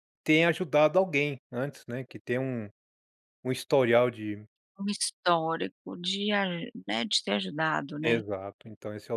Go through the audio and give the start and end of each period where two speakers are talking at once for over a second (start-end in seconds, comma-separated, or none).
none